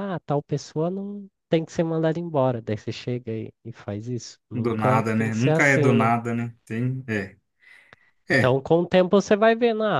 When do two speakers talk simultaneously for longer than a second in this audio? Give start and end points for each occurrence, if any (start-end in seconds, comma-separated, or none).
4.5-6.1